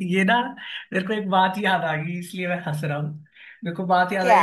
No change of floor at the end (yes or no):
yes